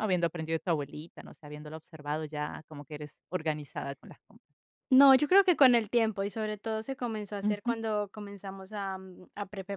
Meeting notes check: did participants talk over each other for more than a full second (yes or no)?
no